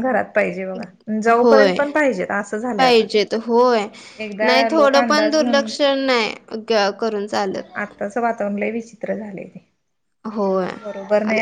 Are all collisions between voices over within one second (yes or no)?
no